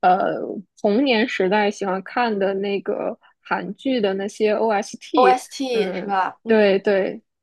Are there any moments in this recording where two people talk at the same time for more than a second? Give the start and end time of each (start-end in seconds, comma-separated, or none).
5.2-6.8